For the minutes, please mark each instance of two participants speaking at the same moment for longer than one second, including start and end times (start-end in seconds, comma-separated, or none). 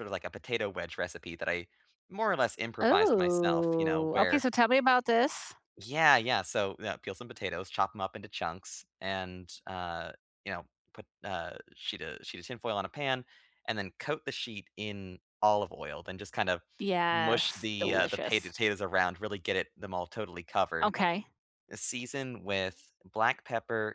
2.8-4.4, 17.1-18.5